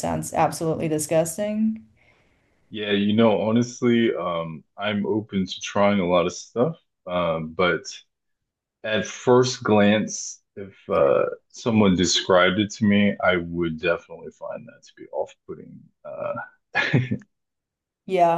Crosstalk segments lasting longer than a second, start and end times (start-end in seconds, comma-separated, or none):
none